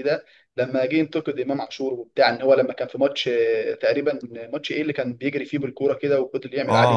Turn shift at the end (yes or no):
yes